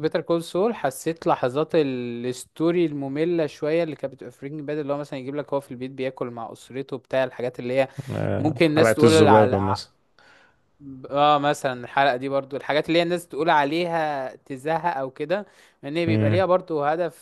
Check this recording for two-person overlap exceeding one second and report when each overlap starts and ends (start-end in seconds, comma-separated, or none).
8.4-9.8